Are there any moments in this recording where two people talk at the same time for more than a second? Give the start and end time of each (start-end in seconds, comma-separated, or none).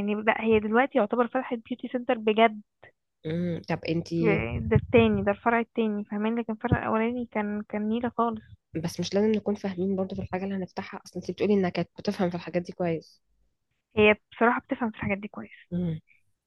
none